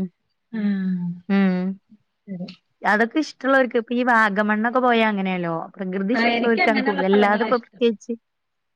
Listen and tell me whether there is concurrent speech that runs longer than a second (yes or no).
yes